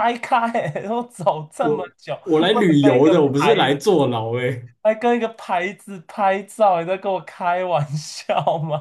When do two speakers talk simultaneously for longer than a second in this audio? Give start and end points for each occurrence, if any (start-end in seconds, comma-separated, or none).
1.6-3.8